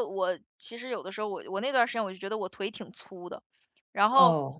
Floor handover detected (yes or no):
no